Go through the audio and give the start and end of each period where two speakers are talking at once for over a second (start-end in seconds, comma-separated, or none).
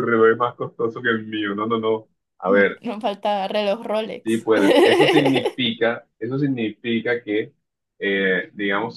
none